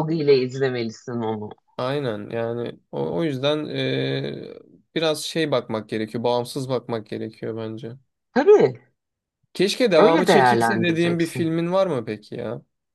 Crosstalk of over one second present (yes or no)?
yes